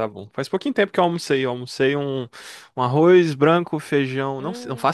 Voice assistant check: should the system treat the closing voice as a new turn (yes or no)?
no